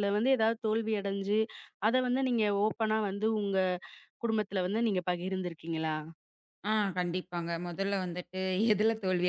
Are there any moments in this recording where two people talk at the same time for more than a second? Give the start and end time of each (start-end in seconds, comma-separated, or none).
none